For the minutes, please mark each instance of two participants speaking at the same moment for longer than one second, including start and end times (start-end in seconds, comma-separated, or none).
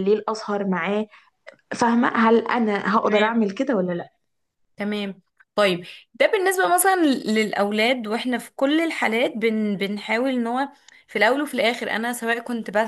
none